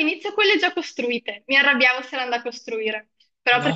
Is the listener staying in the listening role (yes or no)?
yes